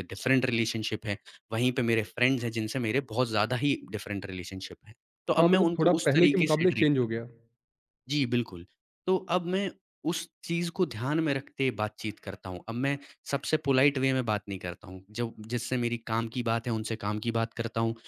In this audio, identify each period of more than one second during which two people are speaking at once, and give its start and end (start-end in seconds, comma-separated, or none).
5.4-7.3